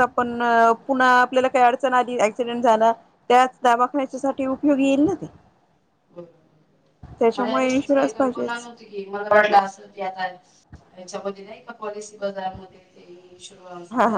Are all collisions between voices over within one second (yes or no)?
no